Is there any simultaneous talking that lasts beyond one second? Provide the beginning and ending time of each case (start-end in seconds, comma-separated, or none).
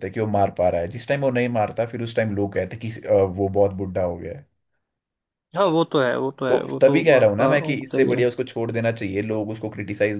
6.5-8.2